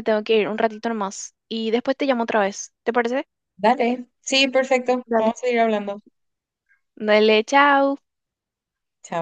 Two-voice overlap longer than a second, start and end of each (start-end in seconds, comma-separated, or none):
none